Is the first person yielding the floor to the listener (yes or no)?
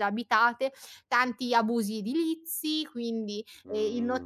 no